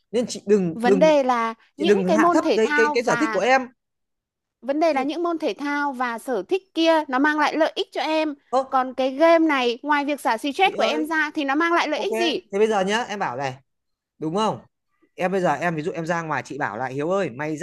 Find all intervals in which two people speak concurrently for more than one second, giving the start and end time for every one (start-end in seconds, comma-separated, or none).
1.8-3.4